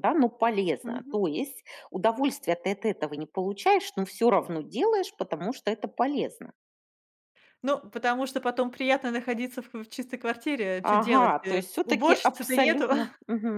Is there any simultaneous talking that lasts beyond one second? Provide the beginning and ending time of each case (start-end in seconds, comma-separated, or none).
10.8-12.9